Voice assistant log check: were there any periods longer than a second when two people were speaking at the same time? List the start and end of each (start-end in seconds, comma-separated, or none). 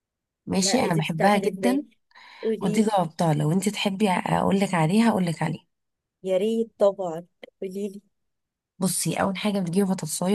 0.6-1.8